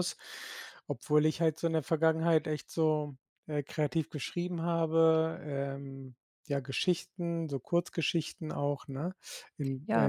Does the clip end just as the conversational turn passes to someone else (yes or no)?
yes